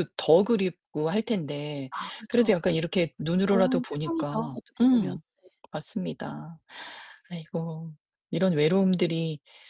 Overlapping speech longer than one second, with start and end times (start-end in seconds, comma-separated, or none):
3.4-5.2